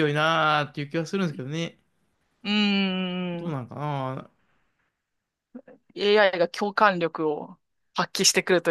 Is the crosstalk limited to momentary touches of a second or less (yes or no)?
yes